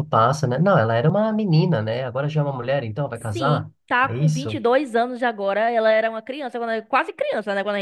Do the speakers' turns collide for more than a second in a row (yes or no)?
yes